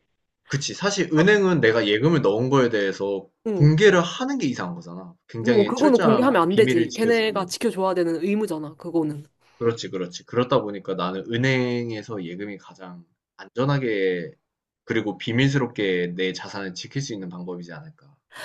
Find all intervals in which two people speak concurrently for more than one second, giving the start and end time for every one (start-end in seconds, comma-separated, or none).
5.4-7.5